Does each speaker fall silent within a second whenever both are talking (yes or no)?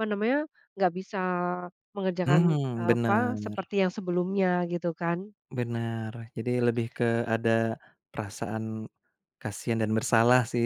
no